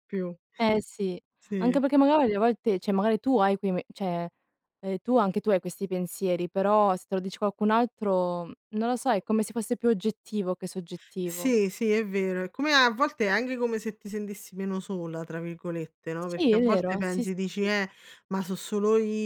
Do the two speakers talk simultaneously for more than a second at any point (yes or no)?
yes